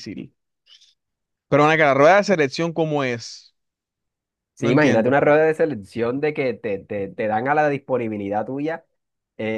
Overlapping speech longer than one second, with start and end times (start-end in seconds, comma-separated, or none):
none